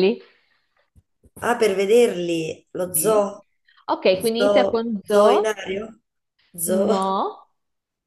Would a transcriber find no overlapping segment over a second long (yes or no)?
no